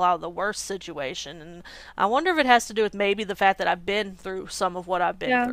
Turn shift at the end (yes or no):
yes